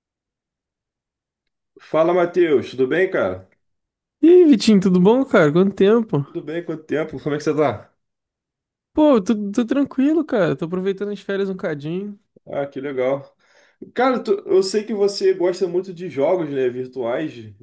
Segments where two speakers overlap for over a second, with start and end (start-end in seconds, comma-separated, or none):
none